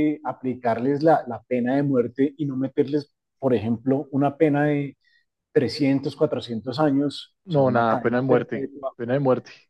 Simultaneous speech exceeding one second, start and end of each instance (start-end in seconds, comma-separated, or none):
7.4-8.9